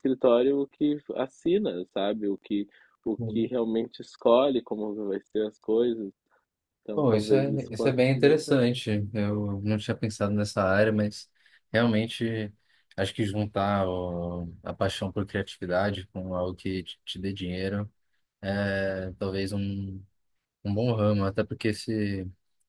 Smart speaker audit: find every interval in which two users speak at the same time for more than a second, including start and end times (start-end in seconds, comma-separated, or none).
7.0-8.7